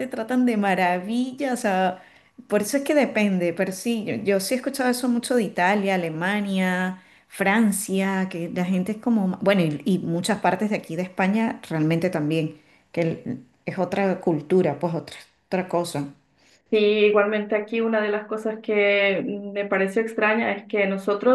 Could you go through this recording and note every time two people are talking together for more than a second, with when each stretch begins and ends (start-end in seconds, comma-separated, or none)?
none